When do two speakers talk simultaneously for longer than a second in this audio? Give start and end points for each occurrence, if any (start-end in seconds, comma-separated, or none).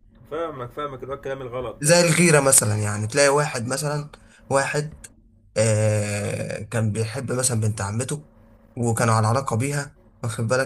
none